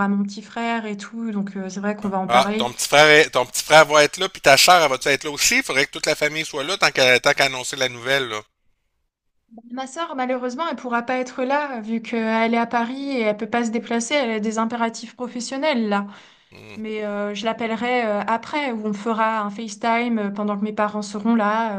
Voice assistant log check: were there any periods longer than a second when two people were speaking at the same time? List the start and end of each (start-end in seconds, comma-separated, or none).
none